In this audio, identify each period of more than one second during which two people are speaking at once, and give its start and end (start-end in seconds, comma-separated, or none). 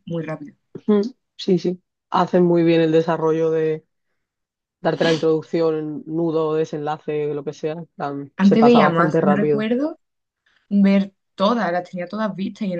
8.4-9.7